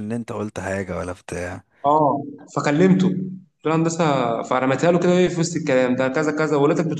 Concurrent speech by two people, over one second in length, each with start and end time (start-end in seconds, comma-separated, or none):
none